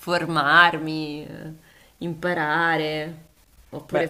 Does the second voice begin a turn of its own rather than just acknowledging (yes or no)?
no